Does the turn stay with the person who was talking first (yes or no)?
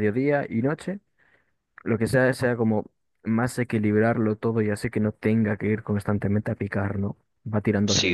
no